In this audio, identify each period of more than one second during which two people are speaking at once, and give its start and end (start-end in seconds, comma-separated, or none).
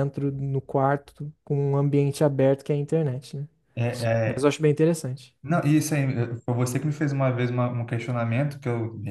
none